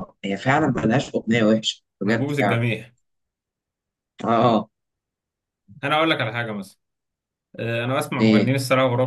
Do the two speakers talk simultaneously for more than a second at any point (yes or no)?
no